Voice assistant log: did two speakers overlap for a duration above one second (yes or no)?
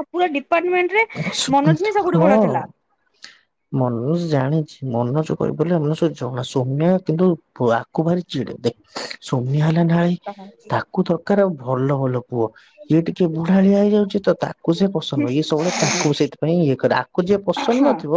no